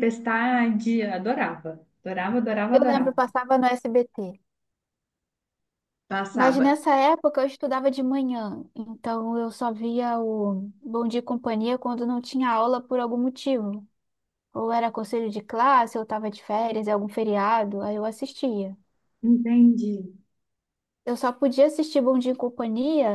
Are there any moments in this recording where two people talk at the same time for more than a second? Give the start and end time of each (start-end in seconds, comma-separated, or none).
none